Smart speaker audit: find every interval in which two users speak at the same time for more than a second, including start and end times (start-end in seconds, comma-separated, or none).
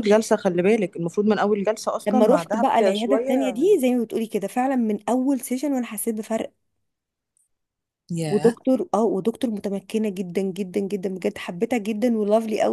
2.1-3.5